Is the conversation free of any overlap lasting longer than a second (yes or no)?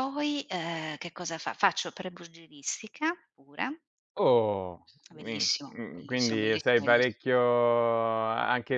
no